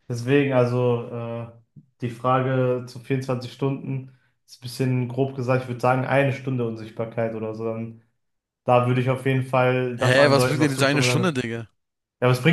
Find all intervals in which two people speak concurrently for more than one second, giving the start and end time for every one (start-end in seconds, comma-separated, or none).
10.1-11.4